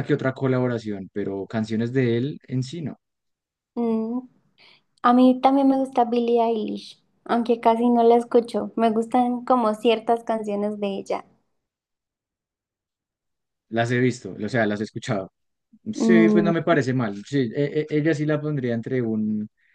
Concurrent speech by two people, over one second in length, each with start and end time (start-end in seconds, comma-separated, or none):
none